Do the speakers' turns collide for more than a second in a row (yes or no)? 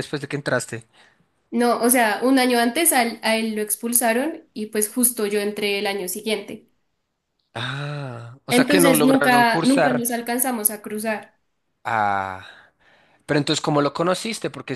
yes